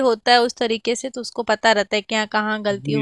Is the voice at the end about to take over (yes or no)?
yes